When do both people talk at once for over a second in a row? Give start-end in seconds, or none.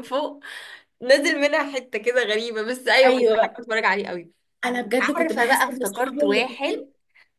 5.2-6.8